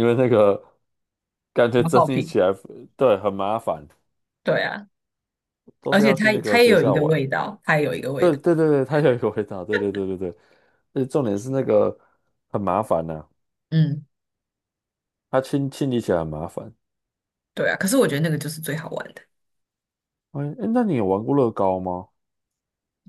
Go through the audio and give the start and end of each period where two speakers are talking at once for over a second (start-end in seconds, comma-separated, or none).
5.9-7.2